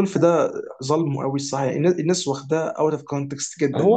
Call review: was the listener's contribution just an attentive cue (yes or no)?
no